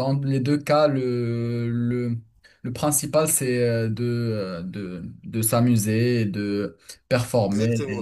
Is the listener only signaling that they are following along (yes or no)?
no